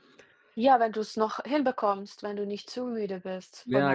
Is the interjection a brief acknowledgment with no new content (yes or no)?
no